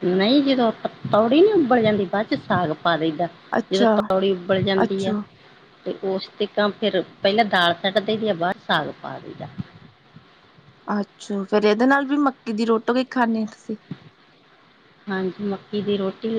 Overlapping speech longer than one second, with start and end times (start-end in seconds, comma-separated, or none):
none